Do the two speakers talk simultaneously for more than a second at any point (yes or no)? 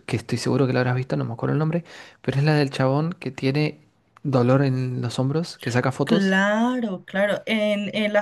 no